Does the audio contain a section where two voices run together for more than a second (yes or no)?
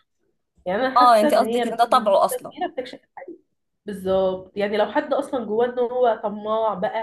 yes